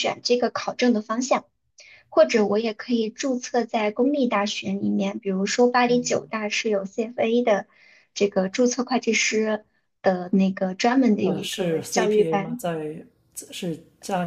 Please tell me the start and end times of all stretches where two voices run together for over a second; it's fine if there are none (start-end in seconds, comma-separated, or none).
11.2-12.6